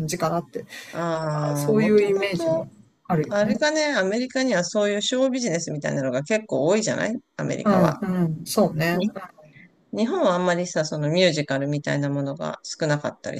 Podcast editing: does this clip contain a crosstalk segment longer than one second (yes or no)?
yes